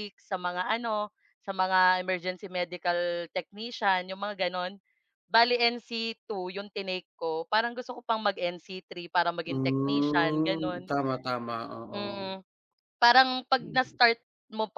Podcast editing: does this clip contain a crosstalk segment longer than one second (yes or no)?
yes